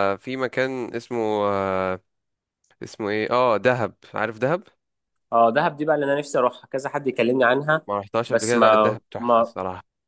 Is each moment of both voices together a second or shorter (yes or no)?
no